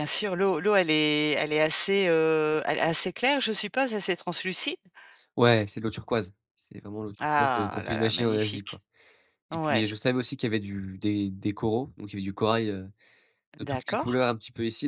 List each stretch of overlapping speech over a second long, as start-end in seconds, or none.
7.2-8.8